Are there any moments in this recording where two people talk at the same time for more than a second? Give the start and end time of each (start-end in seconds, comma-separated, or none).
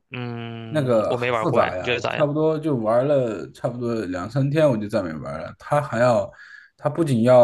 0.7-2.3